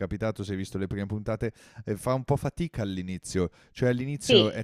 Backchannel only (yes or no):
yes